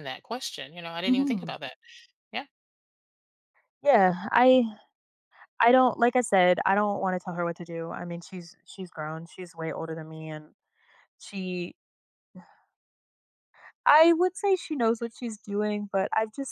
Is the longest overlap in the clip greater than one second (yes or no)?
no